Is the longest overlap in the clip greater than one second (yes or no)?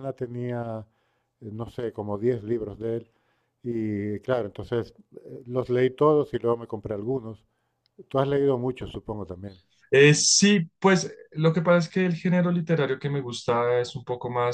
no